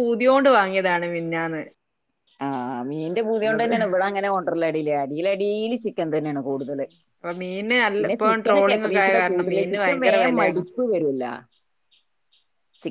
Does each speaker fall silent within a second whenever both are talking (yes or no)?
no